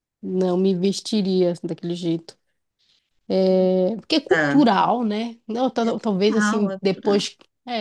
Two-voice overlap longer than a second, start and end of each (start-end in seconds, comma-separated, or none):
5.9-7.2